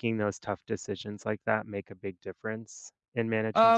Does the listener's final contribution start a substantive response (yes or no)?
yes